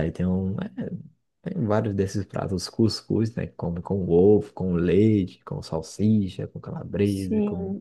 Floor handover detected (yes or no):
yes